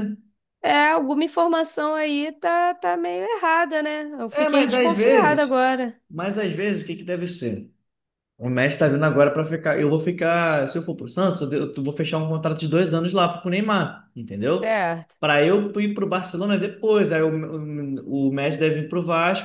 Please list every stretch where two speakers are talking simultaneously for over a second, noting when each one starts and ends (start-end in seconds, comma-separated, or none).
4.3-5.6